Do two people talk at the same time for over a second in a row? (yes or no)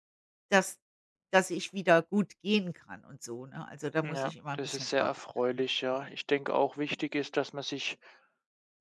yes